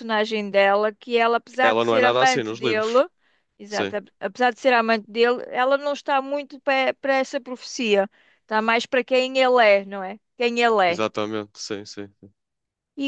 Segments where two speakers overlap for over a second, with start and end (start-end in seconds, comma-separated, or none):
1.6-3.0